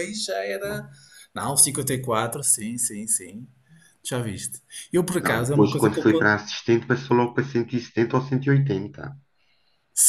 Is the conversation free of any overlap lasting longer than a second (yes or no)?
no